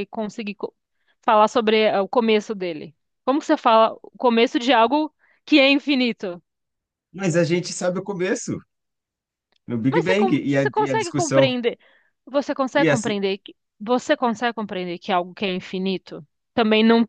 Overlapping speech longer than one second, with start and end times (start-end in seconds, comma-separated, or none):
9.9-11.5